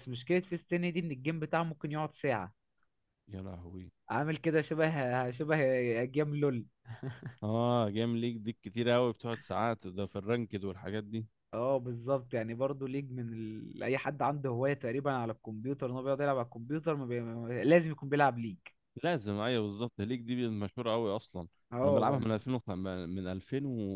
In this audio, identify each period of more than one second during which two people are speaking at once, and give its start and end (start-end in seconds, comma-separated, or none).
none